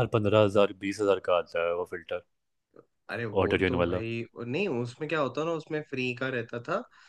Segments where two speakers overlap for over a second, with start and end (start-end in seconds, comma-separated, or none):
none